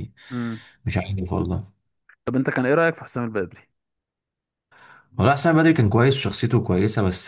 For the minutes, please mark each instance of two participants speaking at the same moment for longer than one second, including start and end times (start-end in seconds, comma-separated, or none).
none